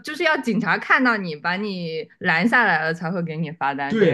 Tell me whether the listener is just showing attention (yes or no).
no